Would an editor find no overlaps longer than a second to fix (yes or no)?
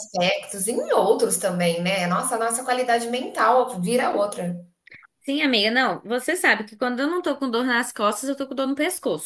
yes